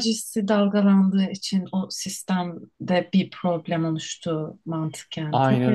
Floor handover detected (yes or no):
yes